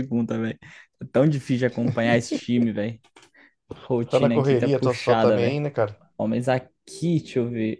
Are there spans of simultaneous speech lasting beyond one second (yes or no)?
yes